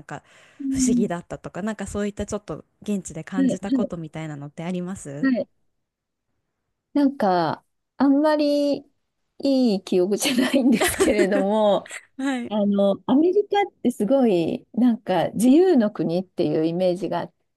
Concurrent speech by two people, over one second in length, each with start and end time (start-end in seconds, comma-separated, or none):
none